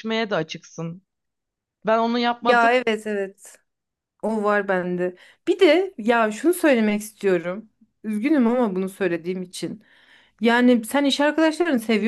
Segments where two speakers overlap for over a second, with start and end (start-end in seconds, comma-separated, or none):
none